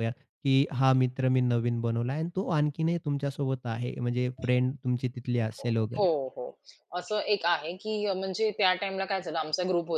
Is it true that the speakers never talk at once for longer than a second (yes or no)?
yes